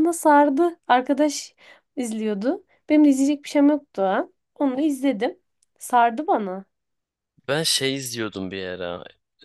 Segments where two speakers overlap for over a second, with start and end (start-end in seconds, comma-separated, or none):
none